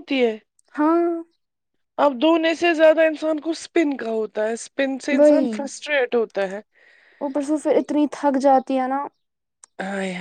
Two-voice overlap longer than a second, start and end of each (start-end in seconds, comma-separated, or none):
none